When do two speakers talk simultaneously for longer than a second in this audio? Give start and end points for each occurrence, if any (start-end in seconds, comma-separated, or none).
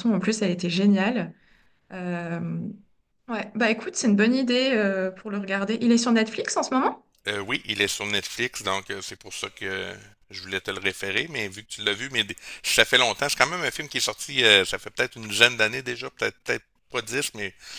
none